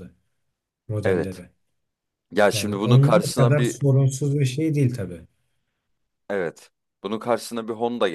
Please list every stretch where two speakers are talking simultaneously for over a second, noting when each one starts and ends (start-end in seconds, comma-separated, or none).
2.5-3.8